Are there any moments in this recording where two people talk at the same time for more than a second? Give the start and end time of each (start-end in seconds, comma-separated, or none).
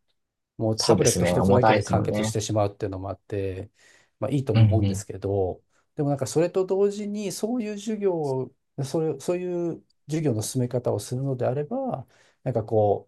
0.8-2.3